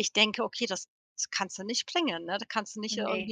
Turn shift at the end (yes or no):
no